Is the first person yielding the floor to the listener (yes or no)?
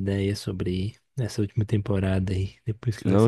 yes